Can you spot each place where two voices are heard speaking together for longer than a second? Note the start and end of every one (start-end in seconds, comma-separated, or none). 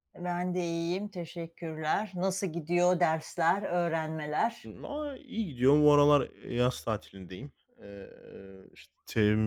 none